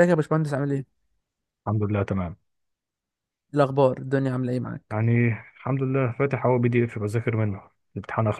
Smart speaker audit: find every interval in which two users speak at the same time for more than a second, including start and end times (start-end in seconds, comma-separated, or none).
none